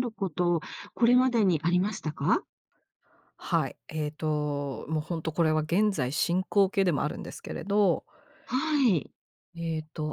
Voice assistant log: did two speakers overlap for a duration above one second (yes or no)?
no